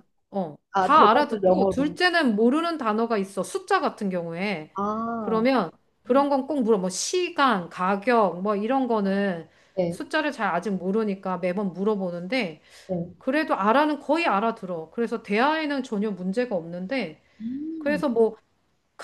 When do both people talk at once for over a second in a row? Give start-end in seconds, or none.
0.7-2.0